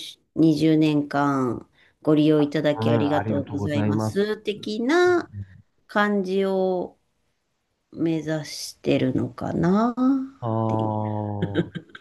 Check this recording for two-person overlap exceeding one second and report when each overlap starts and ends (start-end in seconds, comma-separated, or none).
2.8-4.4